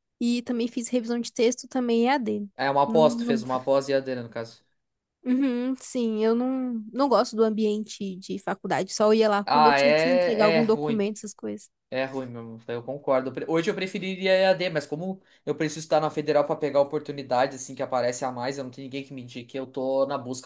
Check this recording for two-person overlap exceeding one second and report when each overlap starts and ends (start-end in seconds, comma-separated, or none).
9.4-11.1